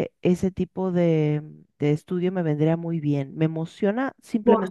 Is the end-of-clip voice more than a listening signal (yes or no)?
yes